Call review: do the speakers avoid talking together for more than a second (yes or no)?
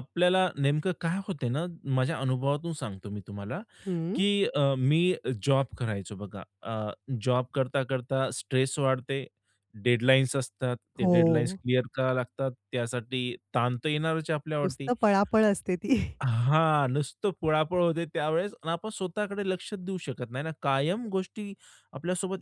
yes